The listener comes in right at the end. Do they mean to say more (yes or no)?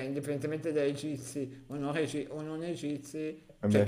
no